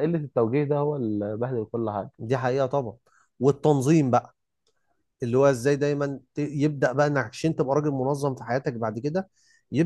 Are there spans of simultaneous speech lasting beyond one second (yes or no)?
no